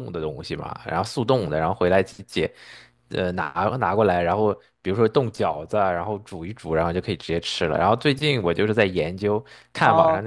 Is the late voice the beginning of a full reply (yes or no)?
yes